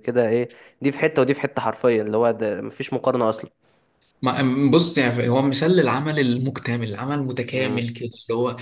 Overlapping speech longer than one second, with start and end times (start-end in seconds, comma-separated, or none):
none